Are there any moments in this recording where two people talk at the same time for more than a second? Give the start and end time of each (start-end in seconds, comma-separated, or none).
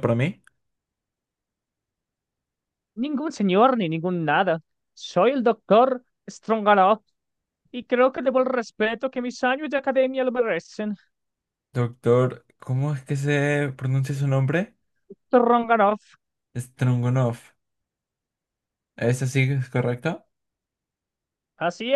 none